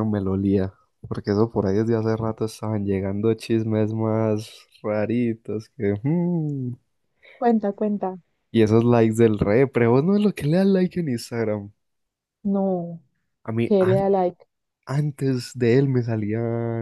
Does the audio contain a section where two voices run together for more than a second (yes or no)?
no